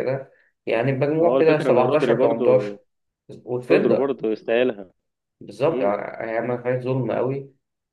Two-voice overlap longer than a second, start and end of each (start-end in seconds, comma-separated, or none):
1.2-2.8